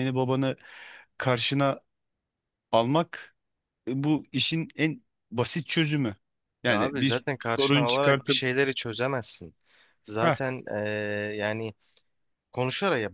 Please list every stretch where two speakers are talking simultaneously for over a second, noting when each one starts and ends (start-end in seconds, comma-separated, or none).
6.7-8.4